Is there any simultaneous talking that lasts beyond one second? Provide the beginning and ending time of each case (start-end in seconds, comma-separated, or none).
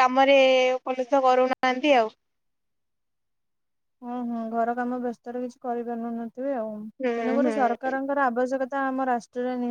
none